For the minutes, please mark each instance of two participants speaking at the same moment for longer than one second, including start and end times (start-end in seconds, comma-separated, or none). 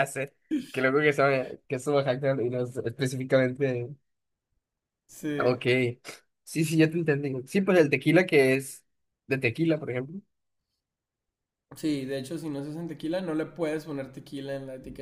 none